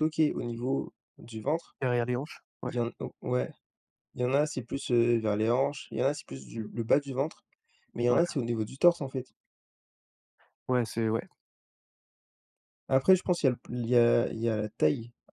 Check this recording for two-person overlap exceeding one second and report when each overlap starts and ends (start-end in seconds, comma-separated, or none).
none